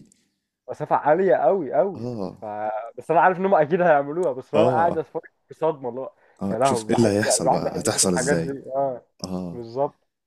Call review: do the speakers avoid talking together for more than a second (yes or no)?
no